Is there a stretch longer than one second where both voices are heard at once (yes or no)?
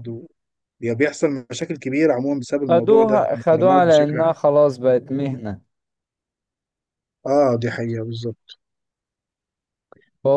yes